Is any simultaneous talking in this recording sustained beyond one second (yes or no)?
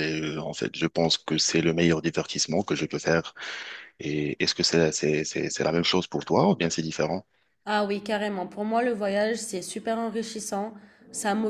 no